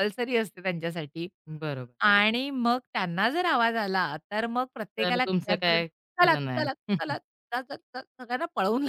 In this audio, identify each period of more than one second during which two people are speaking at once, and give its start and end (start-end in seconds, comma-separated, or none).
5.0-7.1